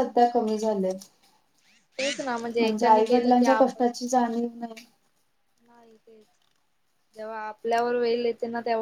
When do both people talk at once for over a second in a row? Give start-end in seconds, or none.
2.6-4.7